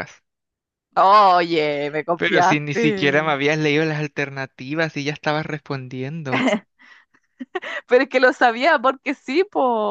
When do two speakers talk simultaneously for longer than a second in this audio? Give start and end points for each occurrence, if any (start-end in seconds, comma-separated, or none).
2.1-3.4